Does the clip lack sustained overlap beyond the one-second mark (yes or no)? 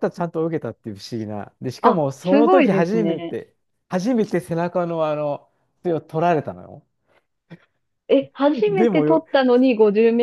no